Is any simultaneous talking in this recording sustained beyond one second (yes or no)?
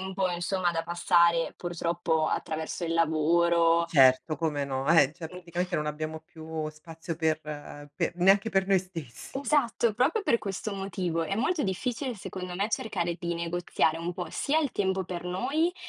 no